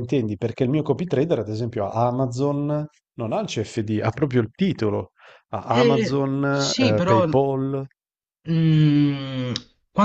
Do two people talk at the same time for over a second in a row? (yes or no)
yes